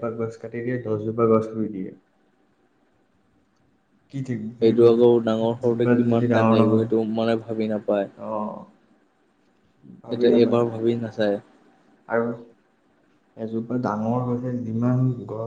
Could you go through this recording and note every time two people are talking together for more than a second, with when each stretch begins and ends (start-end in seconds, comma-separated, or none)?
4.6-6.9